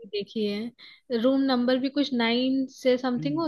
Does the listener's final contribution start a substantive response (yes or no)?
yes